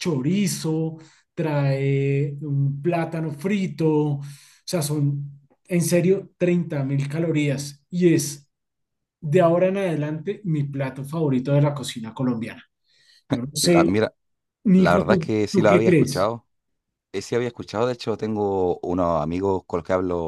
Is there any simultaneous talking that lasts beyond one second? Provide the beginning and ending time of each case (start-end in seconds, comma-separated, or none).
14.8-16.3